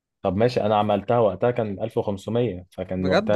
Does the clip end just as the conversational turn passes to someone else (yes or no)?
no